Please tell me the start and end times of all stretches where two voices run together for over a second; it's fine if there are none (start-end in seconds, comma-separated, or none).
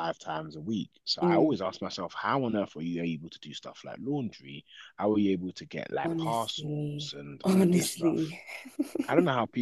6.0-8.3